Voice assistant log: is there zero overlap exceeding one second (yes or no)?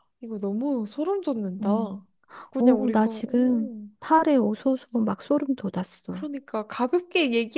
no